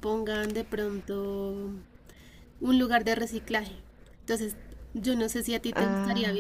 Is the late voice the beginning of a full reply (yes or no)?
no